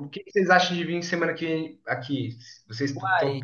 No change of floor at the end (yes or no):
no